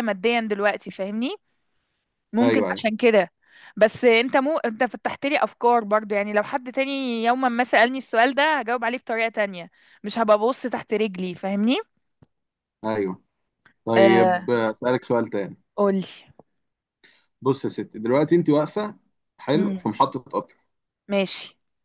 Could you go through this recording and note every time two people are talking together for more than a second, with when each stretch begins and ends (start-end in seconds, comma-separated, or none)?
none